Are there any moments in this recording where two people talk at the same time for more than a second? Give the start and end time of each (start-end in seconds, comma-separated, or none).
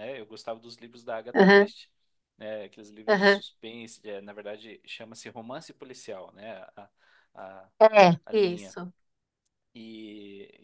none